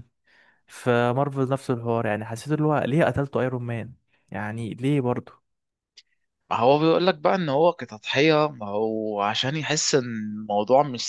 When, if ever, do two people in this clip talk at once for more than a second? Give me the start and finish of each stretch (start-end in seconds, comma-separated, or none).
none